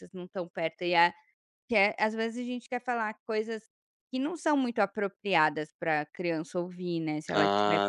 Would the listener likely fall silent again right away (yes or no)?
no